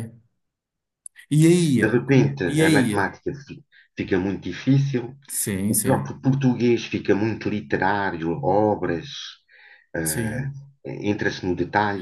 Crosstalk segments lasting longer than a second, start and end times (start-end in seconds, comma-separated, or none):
1.8-3.1